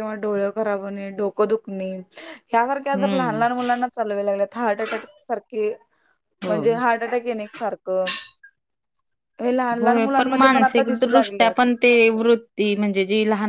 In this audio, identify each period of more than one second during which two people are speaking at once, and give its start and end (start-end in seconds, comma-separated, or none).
9.8-11.7